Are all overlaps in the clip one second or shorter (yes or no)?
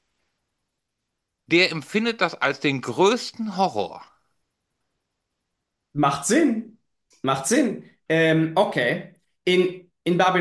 yes